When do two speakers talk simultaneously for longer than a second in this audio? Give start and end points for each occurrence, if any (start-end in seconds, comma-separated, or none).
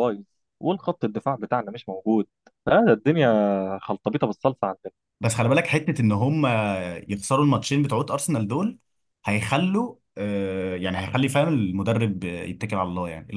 none